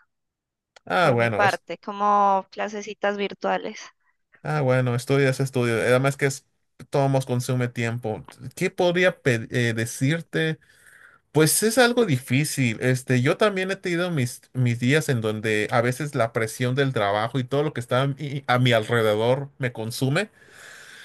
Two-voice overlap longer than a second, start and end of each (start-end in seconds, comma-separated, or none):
none